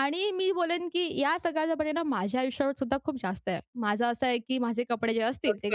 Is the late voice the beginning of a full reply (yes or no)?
yes